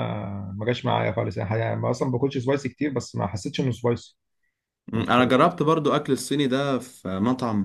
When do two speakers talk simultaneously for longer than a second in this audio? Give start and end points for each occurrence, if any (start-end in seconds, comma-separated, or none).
none